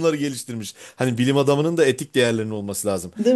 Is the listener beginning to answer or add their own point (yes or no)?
no